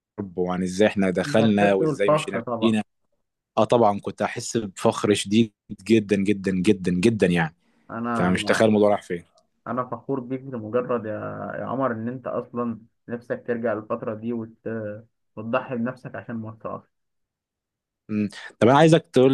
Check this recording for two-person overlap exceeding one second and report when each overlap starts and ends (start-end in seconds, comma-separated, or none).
1.3-2.7